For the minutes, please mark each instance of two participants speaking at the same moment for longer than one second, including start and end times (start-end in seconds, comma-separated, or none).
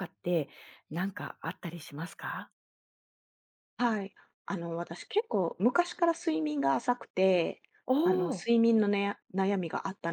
none